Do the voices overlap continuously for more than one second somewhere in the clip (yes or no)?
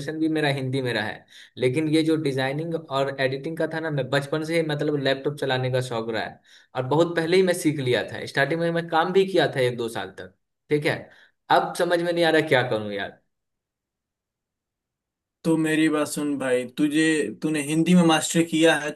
no